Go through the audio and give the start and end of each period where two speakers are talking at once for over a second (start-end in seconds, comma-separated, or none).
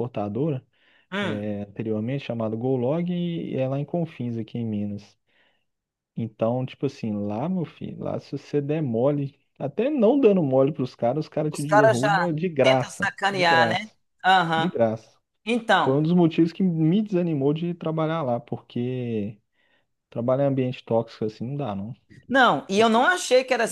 11.5-13.9